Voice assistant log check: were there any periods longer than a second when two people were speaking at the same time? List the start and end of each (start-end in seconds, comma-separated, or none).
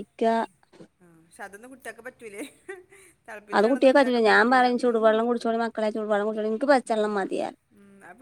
3.6-5.2